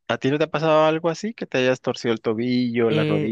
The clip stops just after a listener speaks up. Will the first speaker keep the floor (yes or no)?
yes